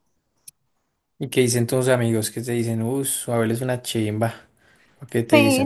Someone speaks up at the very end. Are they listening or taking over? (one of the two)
taking over